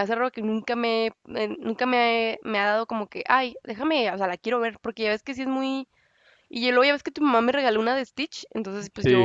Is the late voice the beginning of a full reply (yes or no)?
no